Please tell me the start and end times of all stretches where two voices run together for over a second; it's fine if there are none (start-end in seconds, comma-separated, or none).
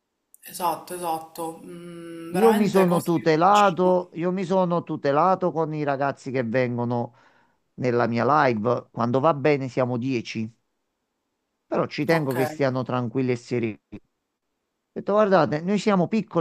2.3-4.0